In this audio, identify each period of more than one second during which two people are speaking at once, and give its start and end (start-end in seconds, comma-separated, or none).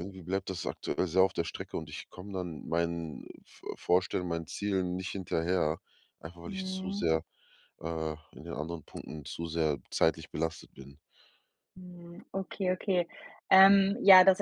none